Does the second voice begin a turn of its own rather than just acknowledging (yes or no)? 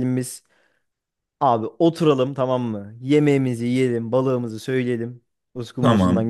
no